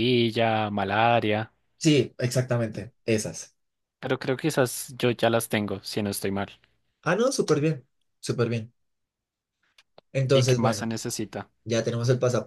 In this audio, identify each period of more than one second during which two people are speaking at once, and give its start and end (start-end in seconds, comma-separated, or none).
none